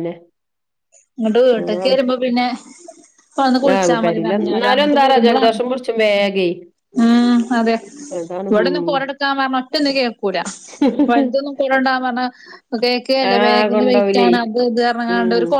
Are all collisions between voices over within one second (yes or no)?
no